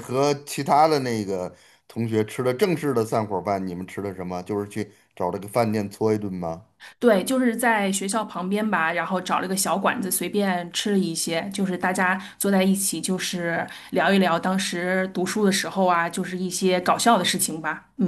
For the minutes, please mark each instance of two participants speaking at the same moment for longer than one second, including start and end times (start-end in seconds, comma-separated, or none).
none